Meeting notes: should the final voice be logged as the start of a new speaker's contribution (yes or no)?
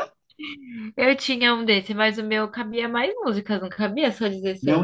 yes